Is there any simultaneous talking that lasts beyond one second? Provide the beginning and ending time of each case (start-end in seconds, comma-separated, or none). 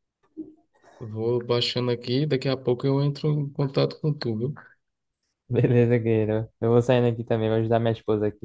none